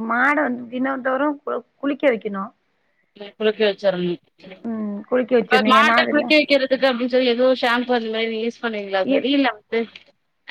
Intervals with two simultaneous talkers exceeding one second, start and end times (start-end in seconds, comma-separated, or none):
4.7-6.3